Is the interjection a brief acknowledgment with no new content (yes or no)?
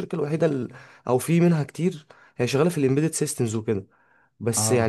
yes